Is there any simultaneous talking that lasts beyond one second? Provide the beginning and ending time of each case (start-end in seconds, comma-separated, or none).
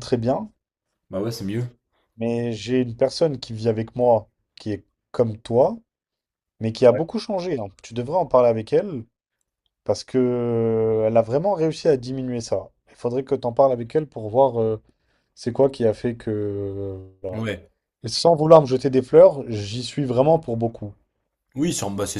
none